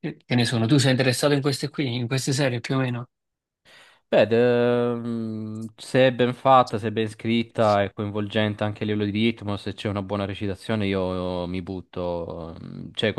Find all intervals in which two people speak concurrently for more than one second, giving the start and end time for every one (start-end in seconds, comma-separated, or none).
none